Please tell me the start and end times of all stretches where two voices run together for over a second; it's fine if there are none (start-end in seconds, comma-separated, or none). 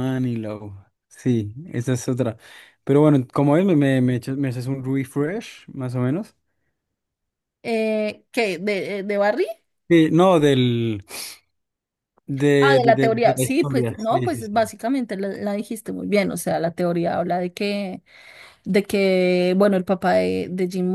12.6-14.6